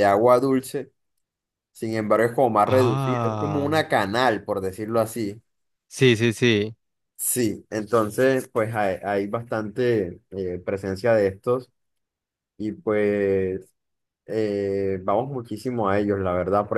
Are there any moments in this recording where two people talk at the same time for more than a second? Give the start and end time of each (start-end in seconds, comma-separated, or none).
2.6-3.9